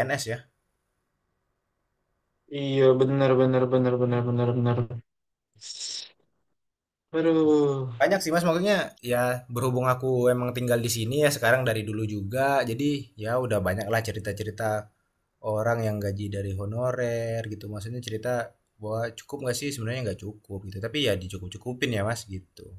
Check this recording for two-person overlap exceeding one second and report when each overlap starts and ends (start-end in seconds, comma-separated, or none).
none